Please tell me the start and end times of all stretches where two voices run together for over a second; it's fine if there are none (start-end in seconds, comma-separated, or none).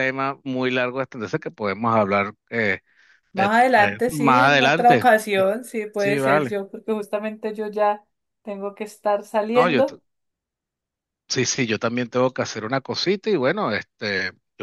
3.4-5.1